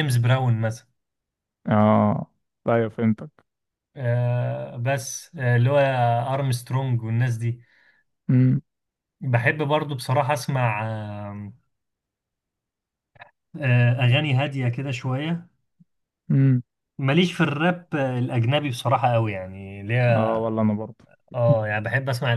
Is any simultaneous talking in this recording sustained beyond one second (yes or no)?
no